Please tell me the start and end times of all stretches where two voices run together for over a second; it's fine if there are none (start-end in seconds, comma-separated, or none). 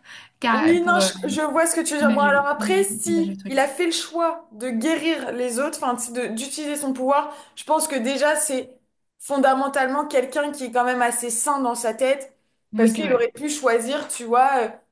2.0-3.6